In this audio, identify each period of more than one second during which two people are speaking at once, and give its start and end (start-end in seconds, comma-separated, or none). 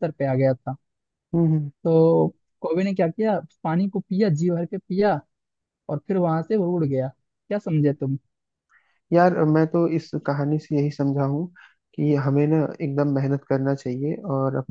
none